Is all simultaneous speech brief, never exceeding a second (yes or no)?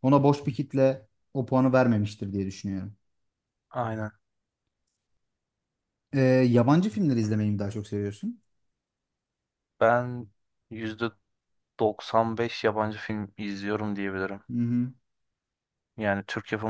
yes